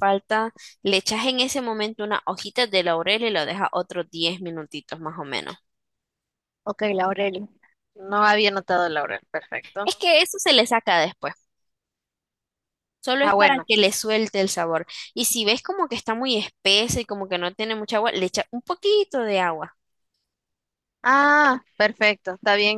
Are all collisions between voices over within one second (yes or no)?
yes